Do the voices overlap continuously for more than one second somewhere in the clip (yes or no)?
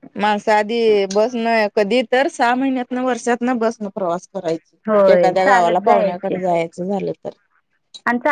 yes